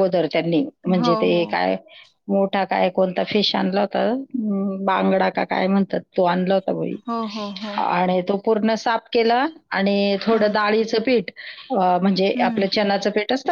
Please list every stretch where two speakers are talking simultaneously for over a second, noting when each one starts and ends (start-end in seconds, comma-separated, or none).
none